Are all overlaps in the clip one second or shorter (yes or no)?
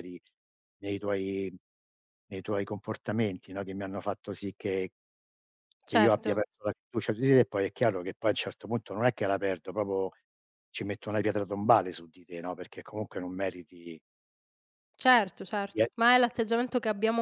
yes